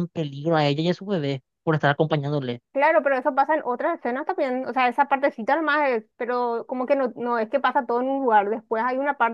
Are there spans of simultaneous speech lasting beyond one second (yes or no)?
no